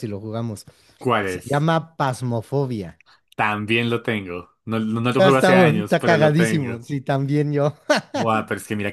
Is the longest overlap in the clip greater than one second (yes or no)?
yes